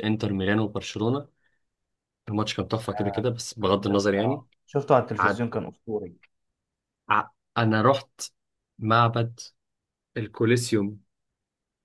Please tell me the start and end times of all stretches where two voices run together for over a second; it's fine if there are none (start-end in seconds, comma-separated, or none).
none